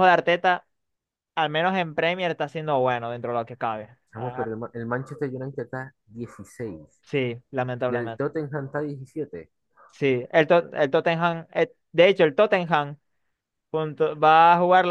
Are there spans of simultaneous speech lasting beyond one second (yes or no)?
no